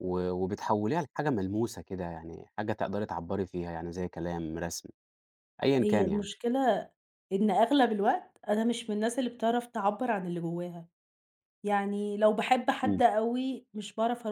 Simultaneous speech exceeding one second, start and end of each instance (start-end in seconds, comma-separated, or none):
none